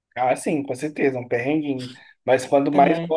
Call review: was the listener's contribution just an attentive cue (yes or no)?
yes